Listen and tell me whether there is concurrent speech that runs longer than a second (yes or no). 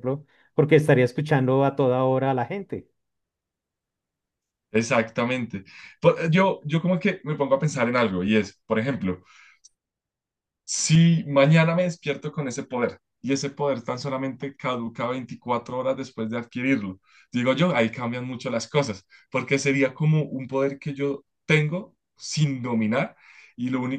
no